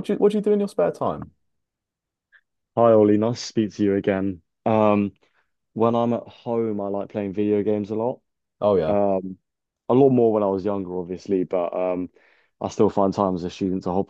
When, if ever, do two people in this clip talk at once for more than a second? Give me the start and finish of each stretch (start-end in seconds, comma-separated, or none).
none